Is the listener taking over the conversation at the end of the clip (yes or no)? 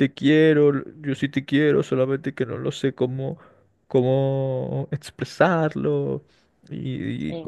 no